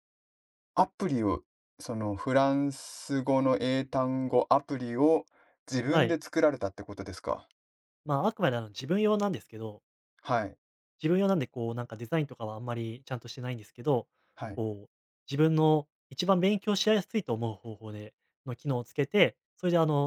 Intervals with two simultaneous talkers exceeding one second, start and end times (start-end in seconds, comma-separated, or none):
none